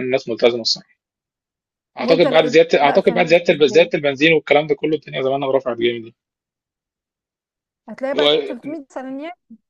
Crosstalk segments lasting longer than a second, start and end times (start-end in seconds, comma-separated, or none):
2.0-3.9